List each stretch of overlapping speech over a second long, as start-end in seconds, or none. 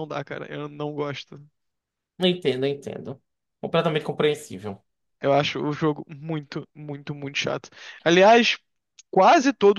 none